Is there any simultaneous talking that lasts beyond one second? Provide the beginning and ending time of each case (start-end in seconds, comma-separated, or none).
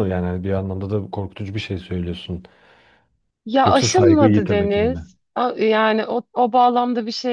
3.6-5.1